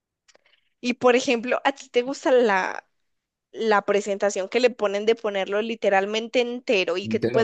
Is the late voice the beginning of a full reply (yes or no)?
no